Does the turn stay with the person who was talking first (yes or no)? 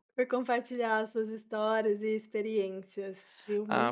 no